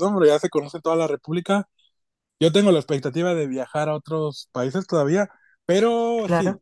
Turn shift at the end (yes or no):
no